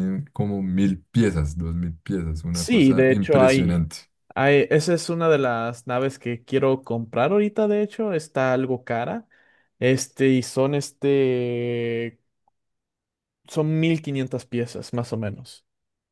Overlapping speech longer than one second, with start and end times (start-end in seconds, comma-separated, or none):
2.5-3.9